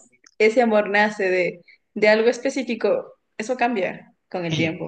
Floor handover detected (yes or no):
yes